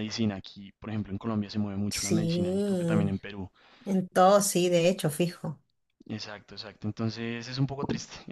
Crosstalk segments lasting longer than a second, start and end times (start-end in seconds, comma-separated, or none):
1.9-3.1